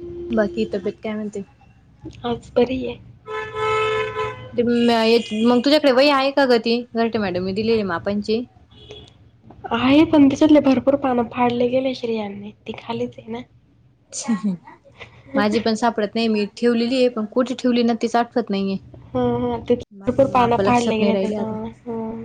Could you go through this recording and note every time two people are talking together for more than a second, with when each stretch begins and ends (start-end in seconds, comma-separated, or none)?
20.0-21.5